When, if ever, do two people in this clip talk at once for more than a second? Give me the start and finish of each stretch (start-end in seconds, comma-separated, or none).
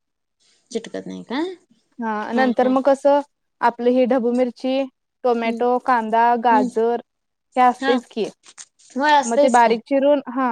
none